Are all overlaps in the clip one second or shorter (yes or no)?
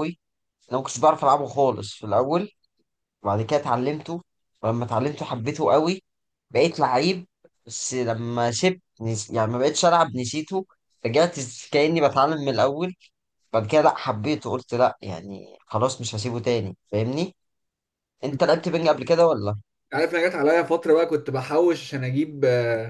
yes